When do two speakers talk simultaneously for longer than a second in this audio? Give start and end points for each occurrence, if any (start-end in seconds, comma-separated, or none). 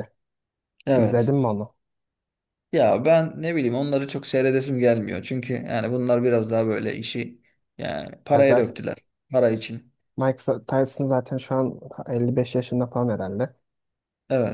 none